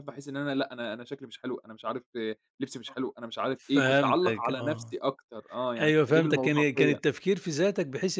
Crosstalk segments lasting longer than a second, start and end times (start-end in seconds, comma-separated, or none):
3.6-4.9, 5.8-7.0